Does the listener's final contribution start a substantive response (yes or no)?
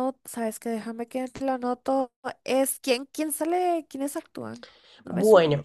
yes